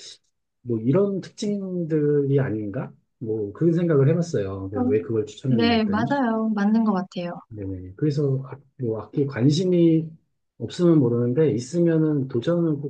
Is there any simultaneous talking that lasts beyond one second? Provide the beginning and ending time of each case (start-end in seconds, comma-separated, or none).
4.7-6.1